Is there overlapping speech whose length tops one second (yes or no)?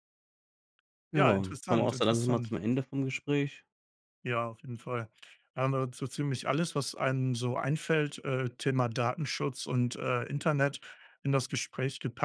yes